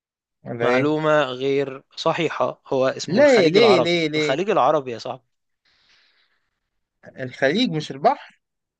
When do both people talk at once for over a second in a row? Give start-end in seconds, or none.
3.1-4.4